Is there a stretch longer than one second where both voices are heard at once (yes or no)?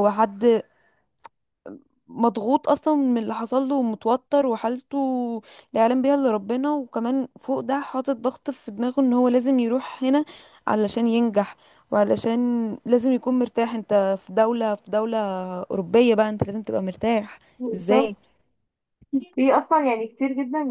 no